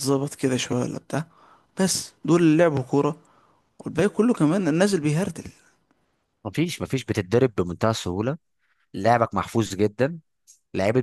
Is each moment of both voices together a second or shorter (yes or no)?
yes